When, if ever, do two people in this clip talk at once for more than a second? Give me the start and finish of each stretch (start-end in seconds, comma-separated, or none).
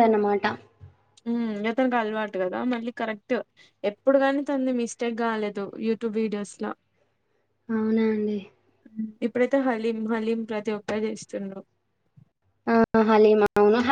none